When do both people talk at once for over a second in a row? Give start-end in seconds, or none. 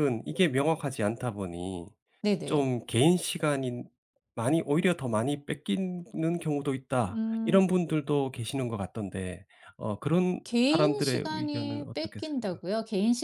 10.4-12.6